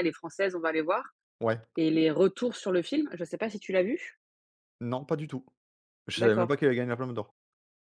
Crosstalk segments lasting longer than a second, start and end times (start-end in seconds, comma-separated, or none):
none